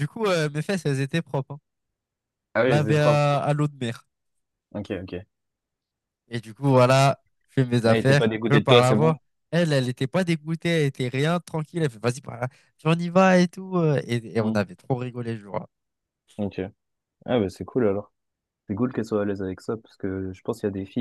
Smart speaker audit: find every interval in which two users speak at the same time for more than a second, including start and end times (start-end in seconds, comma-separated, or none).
7.8-9.2